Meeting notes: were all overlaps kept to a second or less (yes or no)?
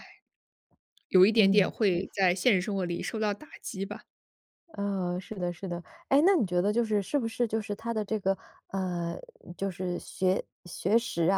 yes